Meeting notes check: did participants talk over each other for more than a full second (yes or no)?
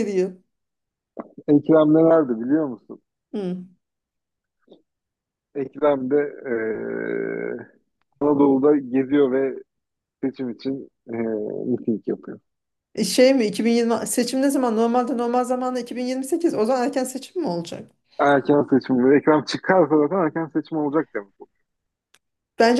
no